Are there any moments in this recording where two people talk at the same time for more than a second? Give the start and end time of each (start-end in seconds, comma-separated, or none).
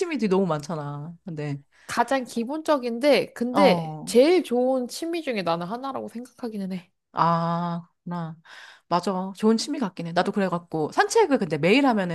none